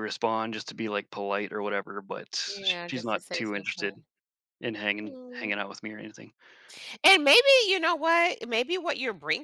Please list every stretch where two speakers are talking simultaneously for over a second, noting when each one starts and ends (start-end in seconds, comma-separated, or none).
2.5-4.0